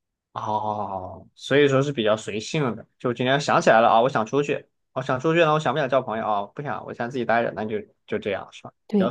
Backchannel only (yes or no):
no